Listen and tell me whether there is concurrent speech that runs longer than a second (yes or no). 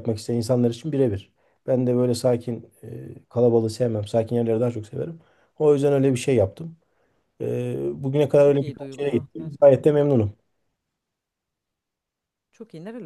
yes